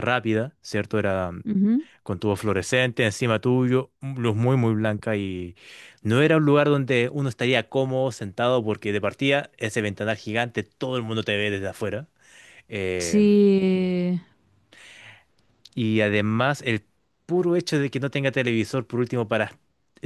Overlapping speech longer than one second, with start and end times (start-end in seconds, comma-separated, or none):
none